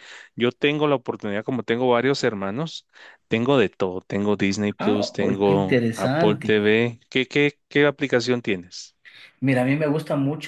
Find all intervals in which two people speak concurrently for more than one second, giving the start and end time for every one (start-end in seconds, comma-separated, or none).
4.8-6.5